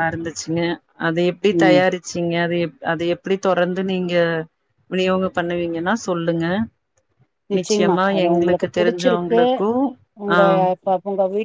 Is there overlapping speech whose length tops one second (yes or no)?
yes